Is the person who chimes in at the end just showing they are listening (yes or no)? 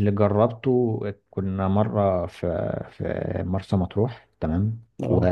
yes